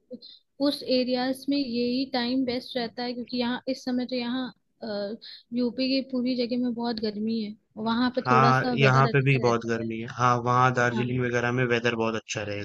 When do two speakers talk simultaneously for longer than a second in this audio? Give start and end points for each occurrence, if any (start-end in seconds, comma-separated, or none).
8.2-9.9